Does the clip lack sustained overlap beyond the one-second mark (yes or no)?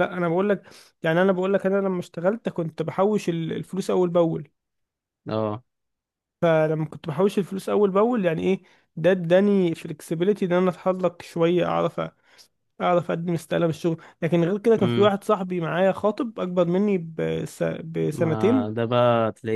yes